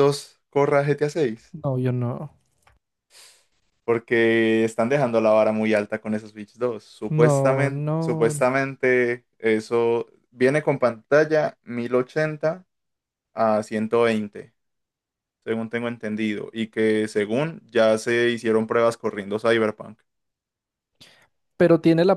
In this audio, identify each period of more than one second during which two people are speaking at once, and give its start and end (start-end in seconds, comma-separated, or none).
7.1-8.4